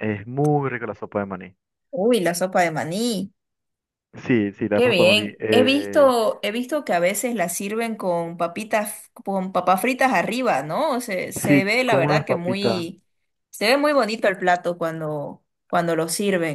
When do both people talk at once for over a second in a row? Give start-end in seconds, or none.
4.7-6.2, 11.4-12.8